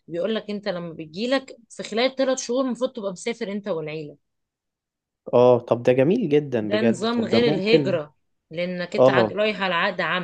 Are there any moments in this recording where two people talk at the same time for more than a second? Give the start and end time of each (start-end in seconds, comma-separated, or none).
6.6-8.0